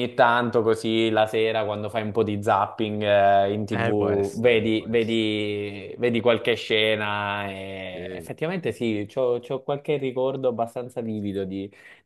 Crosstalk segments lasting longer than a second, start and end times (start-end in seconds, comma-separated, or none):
3.7-5.3